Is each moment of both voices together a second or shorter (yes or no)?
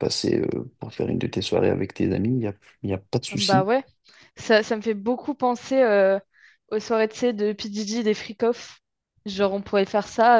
yes